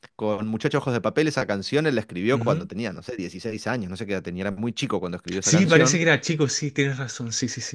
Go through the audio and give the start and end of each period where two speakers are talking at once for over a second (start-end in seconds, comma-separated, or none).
none